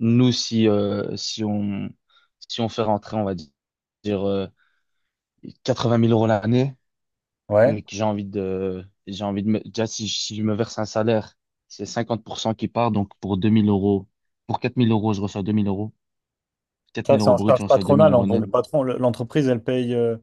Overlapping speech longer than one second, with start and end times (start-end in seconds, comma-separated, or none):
17.1-18.5